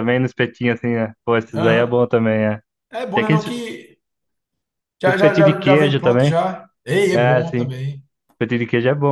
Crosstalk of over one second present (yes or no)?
yes